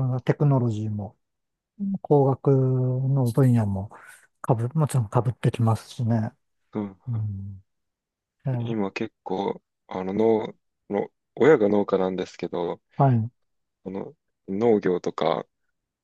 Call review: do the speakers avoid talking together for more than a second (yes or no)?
yes